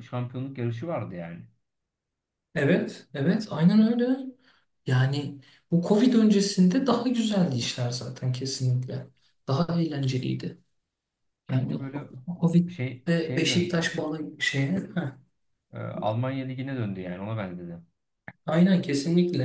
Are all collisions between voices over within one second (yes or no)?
no